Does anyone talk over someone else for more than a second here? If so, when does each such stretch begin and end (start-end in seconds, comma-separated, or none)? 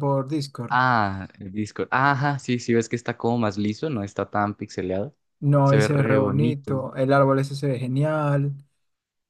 5.6-6.9